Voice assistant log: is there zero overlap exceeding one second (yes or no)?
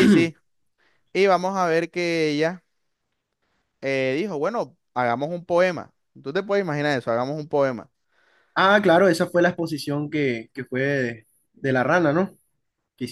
yes